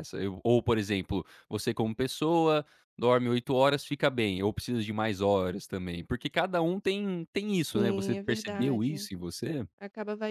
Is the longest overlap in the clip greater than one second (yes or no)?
yes